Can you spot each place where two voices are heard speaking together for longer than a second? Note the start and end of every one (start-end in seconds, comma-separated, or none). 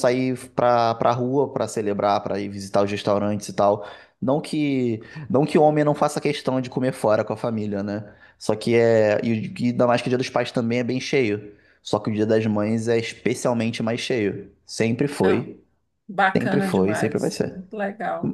16.4-17.6